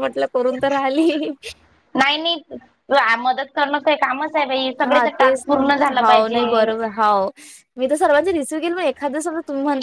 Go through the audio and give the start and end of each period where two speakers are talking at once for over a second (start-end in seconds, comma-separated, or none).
none